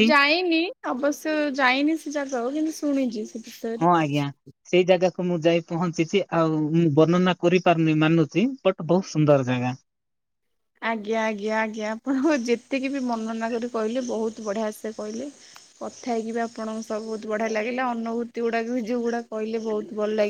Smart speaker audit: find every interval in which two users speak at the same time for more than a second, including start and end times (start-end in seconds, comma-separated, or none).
none